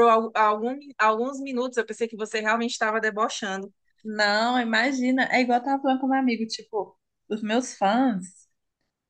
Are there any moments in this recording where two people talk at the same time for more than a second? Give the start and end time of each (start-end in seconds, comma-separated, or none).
none